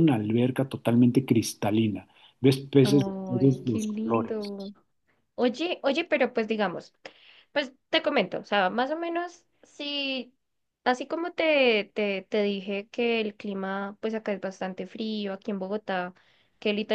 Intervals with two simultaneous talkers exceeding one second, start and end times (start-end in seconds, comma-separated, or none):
2.8-4.7